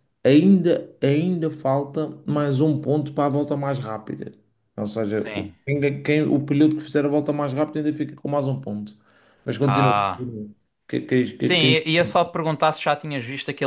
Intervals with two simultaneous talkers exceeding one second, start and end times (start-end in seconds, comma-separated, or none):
none